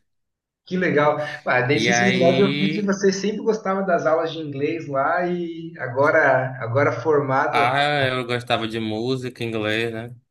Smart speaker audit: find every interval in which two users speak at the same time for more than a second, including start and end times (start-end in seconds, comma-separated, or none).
1.7-3.0